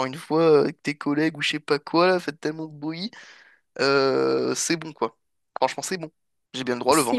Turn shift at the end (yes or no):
no